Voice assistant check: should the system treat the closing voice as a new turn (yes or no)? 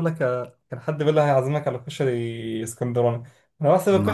no